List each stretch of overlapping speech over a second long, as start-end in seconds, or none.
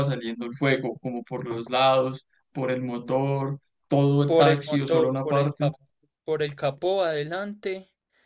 4.3-5.7